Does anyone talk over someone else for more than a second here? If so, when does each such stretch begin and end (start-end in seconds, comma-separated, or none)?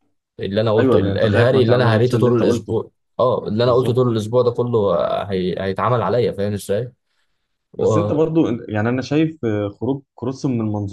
0.8-2.8